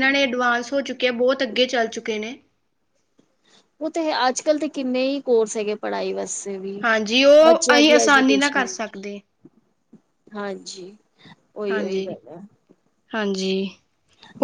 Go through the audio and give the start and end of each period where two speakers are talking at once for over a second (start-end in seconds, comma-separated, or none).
7.4-8.7